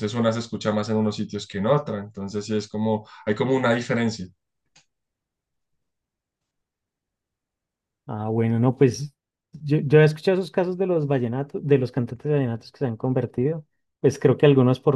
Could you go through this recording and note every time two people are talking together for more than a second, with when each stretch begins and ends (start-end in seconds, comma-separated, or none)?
none